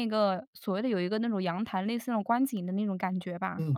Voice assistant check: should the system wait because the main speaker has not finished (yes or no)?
no